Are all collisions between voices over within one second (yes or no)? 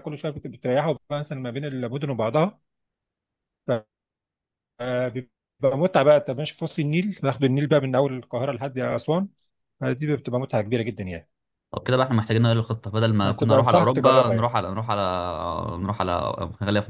no